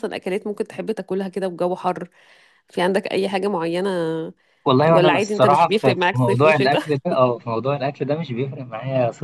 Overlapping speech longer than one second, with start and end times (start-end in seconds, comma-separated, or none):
4.9-6.8